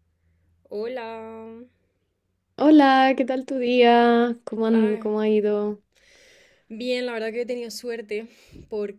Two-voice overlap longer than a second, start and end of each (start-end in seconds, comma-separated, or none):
none